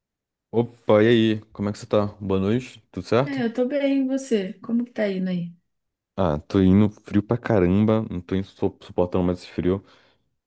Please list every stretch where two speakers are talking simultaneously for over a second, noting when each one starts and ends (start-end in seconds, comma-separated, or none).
none